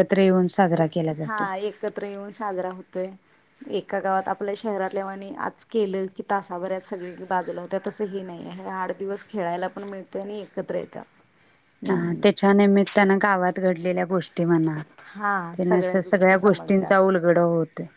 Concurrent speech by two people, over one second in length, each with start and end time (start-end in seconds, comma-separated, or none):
15.6-16.9